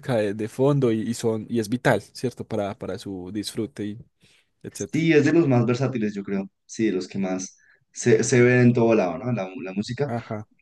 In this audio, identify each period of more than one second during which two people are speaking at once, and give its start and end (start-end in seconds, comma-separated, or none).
none